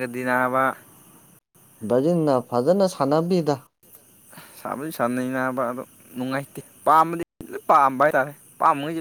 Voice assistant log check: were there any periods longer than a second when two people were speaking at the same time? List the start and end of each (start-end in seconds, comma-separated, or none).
none